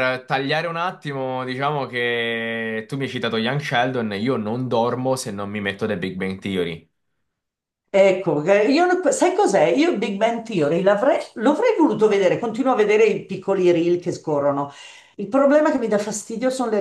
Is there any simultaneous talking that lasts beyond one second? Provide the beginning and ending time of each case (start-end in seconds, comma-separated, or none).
none